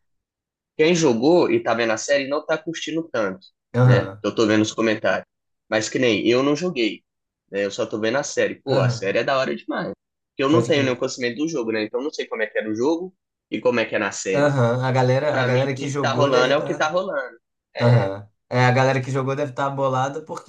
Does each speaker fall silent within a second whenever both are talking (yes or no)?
no